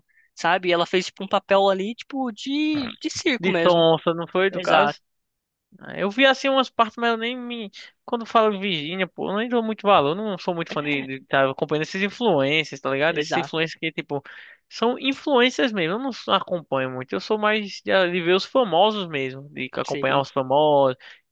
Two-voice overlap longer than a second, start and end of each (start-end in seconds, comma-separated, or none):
none